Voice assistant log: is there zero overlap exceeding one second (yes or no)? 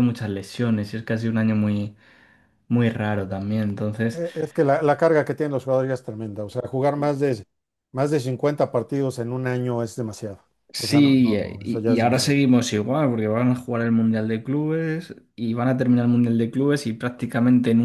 no